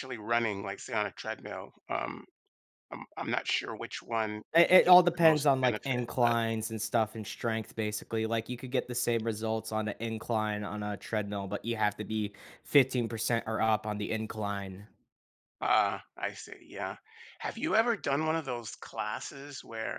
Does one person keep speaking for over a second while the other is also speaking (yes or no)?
yes